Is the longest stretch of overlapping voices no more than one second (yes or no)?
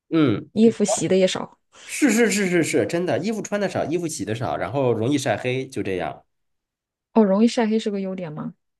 yes